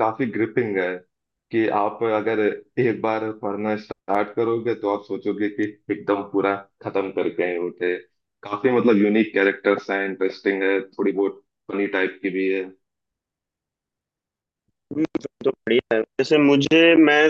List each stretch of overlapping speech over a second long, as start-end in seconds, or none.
none